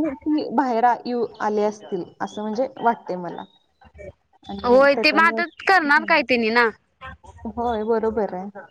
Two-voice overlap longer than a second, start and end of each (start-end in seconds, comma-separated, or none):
4.7-6.1